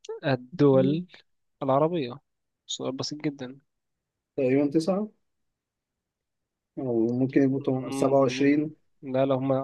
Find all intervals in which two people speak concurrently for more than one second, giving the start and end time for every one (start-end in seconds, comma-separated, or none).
7.5-8.8